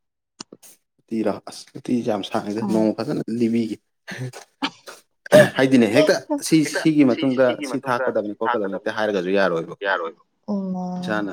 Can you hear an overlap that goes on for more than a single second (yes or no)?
yes